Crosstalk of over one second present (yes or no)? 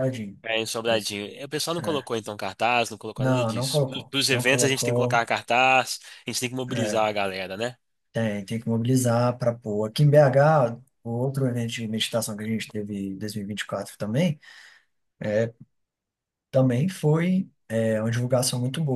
yes